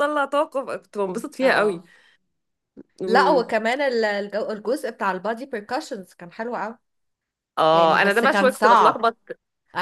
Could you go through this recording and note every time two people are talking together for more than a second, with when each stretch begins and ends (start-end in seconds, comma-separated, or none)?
7.7-9.1